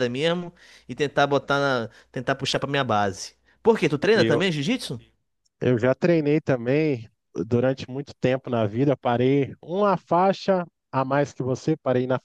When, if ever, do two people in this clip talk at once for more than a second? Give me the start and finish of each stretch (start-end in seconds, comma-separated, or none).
none